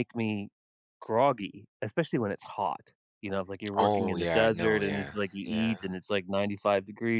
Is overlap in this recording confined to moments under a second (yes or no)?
no